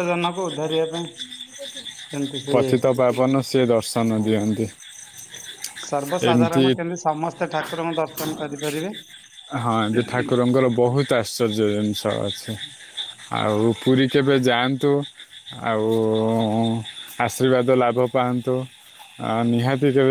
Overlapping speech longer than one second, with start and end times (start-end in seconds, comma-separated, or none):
none